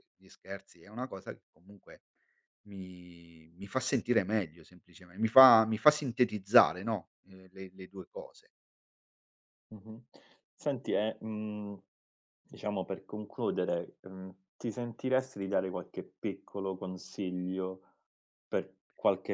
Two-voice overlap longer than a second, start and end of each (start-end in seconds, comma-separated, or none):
none